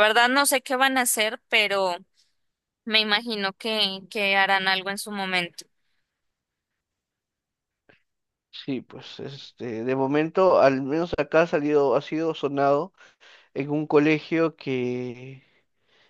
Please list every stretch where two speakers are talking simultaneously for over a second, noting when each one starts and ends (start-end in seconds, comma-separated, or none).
none